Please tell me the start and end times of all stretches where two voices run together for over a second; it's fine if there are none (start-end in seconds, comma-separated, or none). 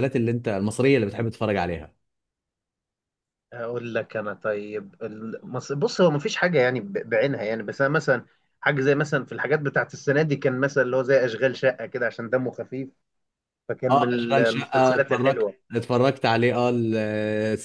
13.9-15.5